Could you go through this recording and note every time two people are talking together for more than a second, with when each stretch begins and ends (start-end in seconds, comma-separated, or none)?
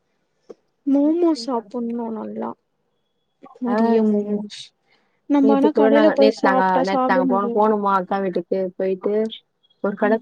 5.4-7.7